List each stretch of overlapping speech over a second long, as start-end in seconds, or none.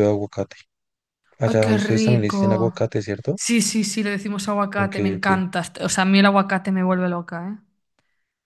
1.4-2.7